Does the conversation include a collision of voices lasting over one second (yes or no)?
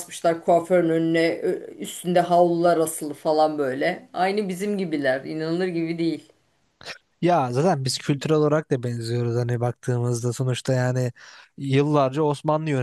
no